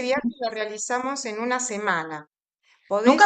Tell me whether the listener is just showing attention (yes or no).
no